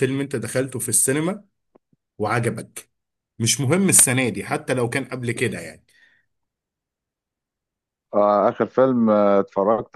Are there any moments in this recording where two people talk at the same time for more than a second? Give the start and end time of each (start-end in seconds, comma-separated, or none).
none